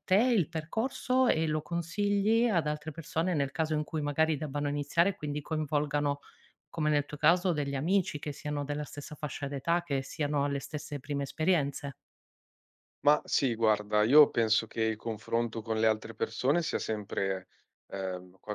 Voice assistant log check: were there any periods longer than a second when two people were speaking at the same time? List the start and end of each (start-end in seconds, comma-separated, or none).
none